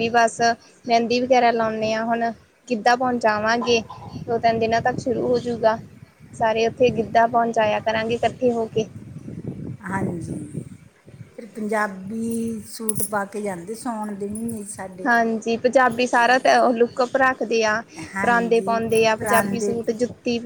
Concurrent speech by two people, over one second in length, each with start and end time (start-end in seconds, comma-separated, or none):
18.2-19.7